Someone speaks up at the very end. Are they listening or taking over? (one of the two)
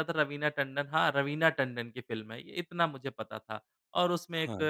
listening